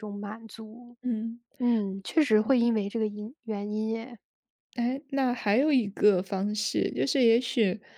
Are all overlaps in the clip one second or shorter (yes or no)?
yes